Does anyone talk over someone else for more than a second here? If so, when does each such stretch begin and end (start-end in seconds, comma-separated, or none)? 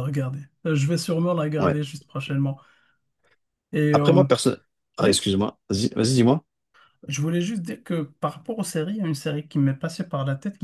none